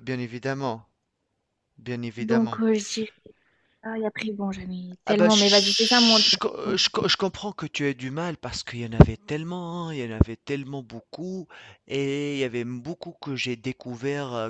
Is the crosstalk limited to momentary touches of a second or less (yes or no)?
no